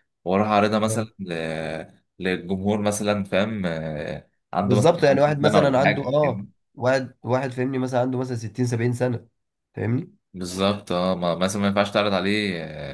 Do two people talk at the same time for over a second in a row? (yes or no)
yes